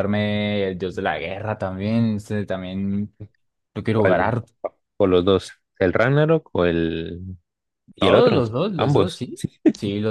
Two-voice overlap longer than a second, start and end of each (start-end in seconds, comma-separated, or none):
8.0-9.6